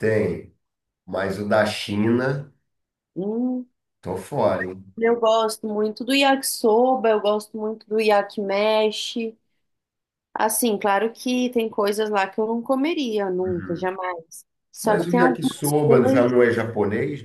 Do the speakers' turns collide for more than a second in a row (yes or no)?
yes